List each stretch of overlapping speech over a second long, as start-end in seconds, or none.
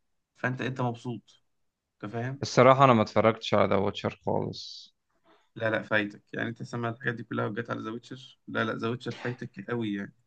none